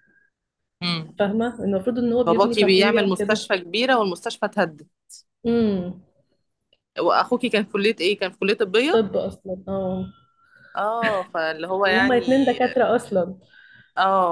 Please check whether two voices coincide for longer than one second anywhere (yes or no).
yes